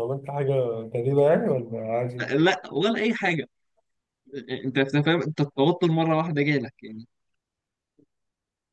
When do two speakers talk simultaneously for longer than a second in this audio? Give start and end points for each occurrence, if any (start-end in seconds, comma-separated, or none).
none